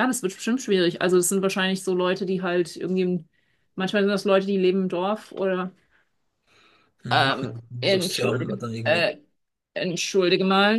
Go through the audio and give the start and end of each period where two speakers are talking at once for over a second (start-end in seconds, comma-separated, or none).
7.1-9.1